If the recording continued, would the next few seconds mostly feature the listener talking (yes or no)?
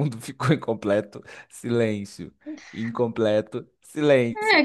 yes